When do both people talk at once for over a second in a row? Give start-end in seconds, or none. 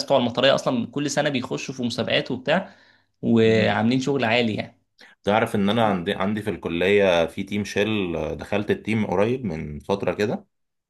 none